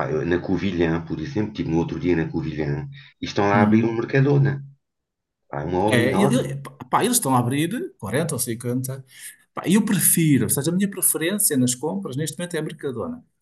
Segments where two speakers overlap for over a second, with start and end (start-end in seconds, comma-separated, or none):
none